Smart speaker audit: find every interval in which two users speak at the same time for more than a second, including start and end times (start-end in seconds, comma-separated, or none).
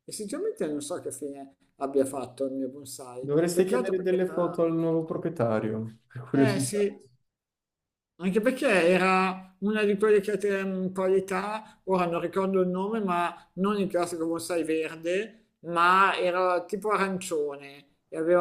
3.2-4.6